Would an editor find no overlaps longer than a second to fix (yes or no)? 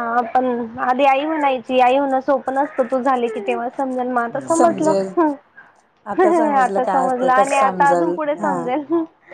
no